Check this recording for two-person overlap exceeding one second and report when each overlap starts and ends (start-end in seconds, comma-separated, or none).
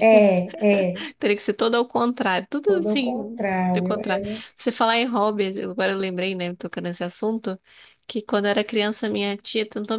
2.7-4.2